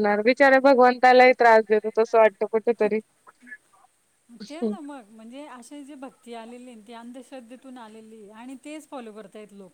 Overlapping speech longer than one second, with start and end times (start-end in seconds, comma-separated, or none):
none